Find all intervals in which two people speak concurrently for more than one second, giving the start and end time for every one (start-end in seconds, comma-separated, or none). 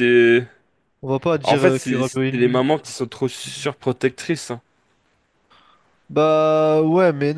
1.4-2.6